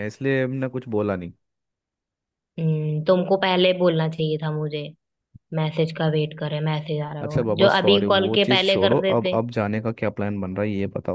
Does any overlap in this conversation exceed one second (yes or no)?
yes